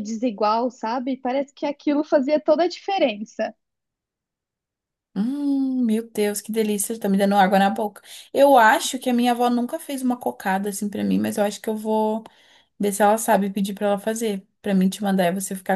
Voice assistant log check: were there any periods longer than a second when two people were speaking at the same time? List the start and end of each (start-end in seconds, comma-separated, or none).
none